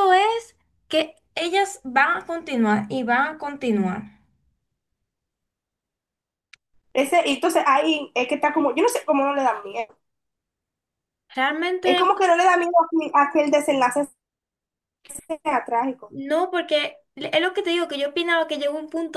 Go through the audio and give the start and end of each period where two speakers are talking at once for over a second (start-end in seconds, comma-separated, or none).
none